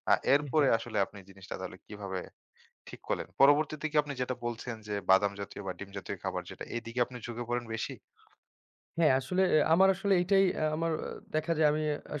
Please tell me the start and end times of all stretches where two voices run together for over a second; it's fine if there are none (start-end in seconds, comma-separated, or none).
none